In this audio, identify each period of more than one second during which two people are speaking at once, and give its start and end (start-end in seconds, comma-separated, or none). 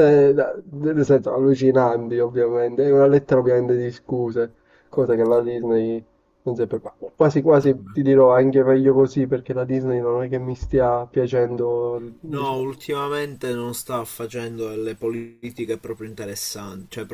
none